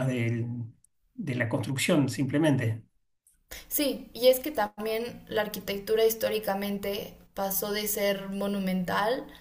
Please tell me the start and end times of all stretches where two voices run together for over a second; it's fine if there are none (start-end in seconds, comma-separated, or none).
none